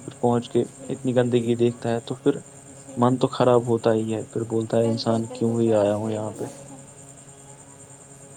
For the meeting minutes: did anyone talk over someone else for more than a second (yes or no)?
yes